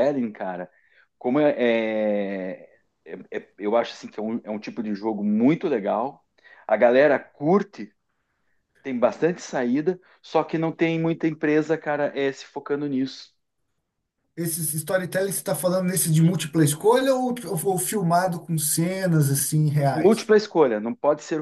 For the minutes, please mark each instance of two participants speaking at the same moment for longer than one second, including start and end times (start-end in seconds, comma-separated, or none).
none